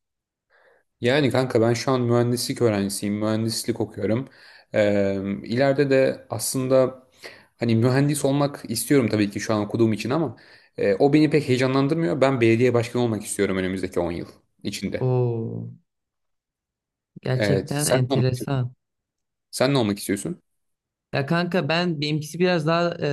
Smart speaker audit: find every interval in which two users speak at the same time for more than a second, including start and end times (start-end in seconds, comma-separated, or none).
17.3-18.5